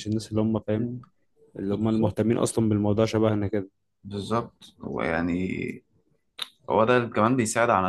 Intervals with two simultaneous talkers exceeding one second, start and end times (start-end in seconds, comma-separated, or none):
none